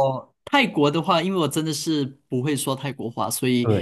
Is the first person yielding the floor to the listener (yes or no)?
no